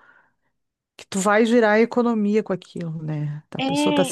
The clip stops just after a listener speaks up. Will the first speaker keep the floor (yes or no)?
yes